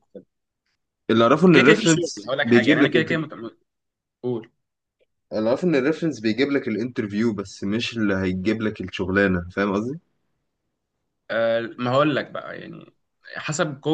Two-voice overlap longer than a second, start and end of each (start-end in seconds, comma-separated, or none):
1.5-3.1